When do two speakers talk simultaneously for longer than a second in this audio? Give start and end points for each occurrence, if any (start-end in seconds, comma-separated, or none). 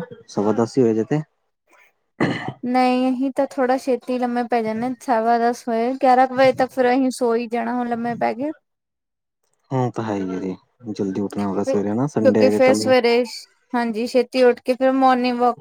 11.5-12.9